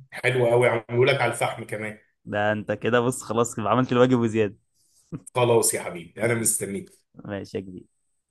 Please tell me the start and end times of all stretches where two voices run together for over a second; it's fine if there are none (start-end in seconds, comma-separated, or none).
none